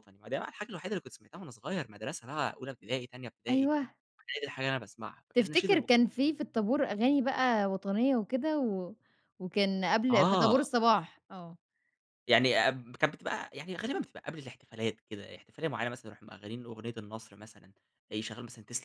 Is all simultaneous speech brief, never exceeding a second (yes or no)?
yes